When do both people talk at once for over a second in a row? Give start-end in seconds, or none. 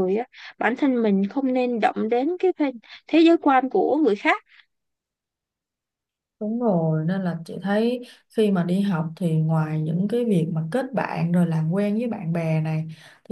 none